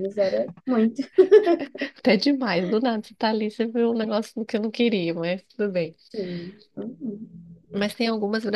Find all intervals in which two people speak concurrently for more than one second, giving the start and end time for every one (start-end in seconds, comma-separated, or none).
none